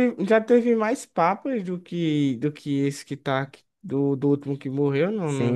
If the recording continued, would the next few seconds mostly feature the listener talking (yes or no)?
yes